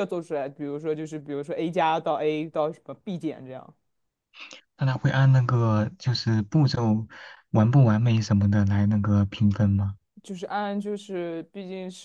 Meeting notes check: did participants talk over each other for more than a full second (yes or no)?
no